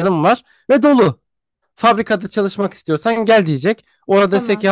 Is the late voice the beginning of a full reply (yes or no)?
no